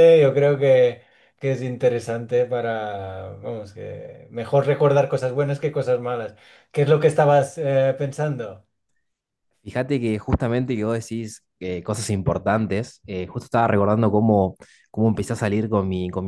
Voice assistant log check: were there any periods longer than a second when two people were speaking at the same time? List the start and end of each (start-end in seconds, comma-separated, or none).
none